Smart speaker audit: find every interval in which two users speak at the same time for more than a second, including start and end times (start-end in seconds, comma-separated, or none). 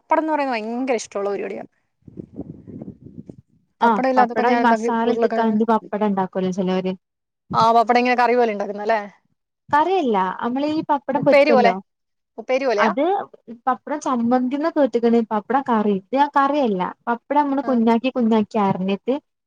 3.9-5.6